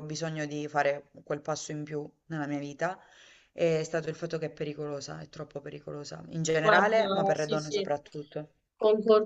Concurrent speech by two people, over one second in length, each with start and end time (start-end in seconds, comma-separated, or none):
6.6-7.9